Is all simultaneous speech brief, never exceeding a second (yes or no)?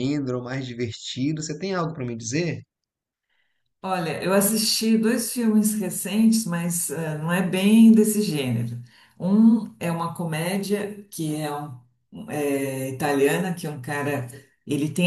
yes